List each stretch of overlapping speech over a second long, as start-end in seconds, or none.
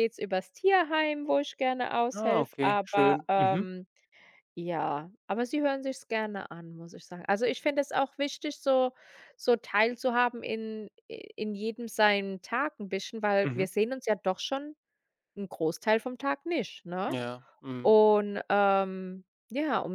2.1-3.7